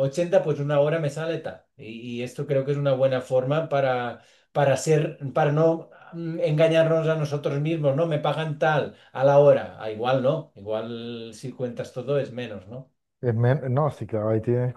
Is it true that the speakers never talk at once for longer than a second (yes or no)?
yes